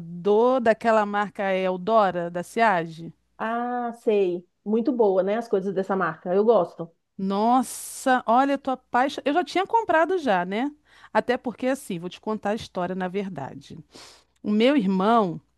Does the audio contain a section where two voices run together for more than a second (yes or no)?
no